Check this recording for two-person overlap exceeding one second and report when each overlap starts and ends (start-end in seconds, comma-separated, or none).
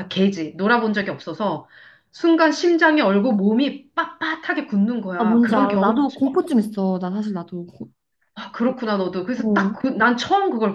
5.2-6.4